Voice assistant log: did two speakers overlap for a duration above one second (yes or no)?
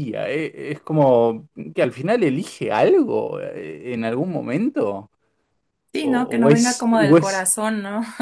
yes